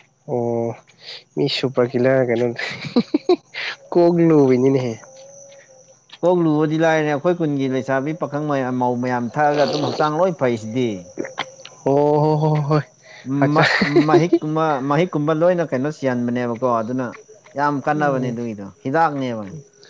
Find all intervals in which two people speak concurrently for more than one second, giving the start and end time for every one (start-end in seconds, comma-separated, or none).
none